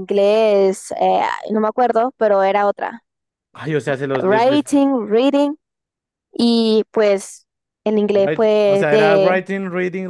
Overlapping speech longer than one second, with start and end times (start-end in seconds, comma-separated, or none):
8.1-9.4